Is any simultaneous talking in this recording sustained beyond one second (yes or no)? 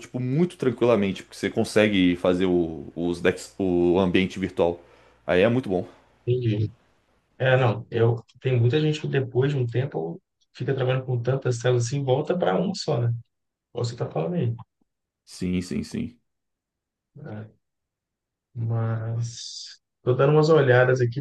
no